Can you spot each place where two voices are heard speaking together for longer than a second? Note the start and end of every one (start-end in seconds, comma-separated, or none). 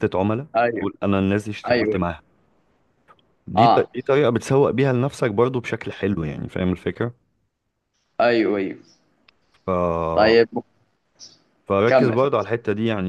none